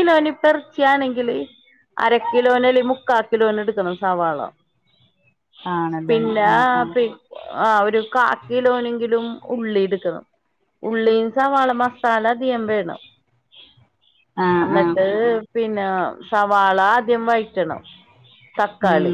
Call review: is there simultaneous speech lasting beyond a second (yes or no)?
no